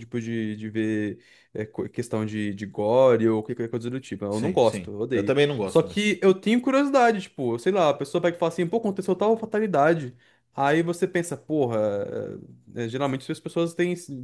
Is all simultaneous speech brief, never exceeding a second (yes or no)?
no